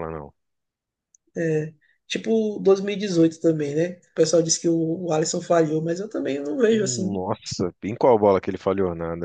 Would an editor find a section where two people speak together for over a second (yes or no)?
no